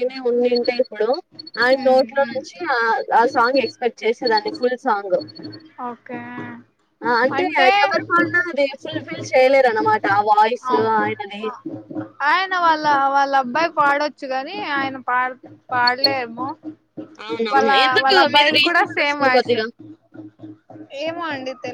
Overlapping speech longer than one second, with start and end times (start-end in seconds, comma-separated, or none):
17.5-19.6